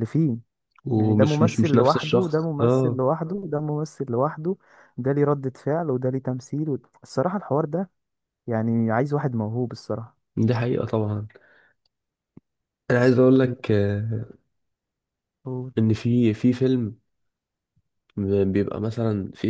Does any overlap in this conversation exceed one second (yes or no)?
yes